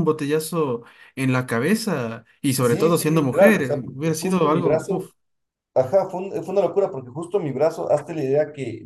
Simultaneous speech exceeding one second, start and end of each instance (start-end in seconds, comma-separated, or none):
2.6-5.1